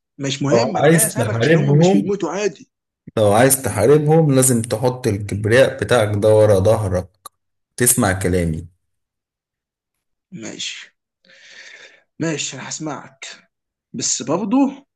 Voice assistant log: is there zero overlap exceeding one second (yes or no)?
no